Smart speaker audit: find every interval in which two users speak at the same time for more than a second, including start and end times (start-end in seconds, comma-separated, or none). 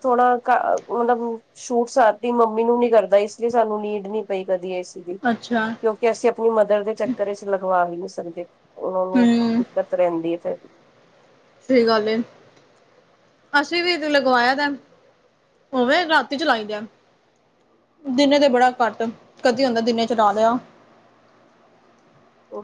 none